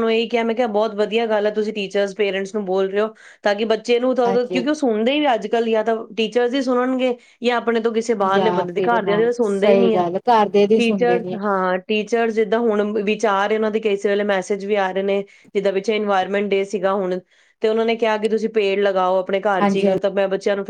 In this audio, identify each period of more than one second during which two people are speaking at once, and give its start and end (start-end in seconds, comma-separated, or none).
8.3-10.0